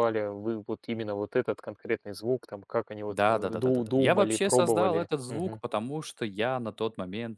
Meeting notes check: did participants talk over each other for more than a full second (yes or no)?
yes